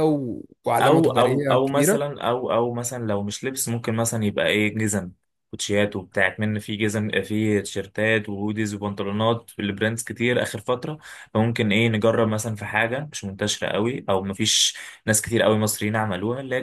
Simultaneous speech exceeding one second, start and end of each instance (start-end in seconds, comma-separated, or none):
0.8-2.1